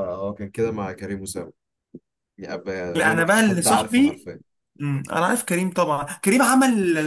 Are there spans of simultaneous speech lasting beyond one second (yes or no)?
yes